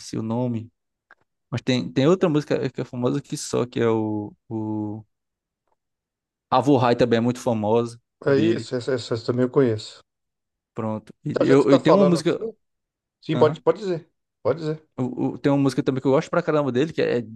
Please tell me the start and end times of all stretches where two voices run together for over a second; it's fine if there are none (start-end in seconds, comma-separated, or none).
11.3-12.5